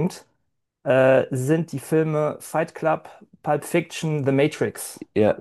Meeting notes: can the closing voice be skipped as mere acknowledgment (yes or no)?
no